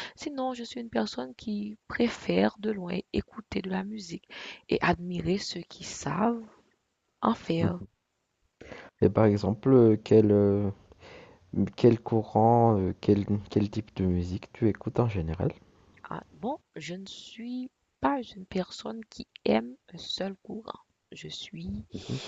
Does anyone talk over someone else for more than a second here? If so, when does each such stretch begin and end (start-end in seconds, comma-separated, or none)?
none